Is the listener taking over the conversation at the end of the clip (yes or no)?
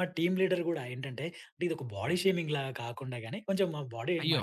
no